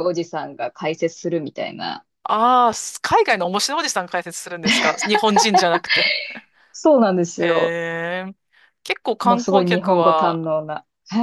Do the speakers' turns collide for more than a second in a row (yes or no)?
yes